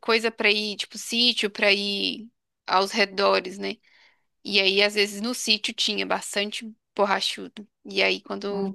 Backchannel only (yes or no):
yes